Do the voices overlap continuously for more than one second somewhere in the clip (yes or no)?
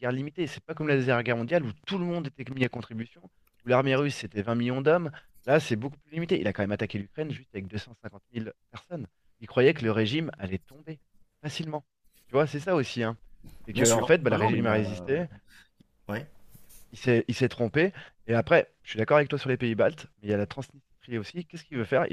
yes